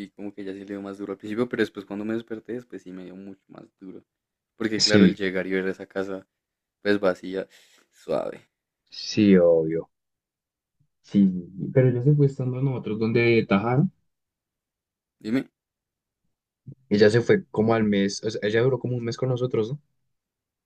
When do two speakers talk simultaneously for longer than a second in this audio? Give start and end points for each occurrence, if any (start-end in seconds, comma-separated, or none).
none